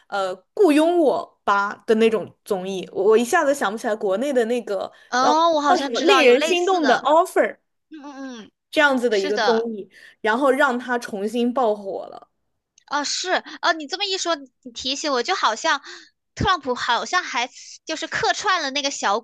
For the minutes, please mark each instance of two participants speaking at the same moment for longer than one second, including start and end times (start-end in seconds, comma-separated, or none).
5.1-7.1